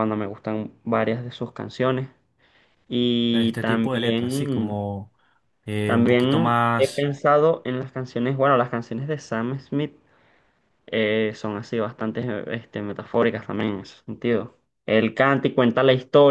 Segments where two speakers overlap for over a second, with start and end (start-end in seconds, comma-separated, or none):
3.3-4.8, 5.8-7.1